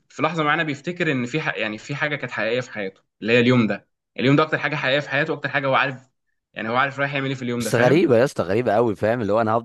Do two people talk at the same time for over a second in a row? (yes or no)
no